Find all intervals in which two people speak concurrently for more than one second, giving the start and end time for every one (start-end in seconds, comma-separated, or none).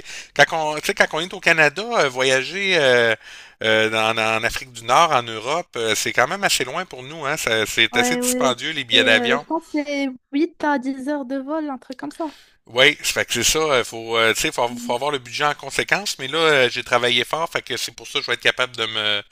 7.9-9.4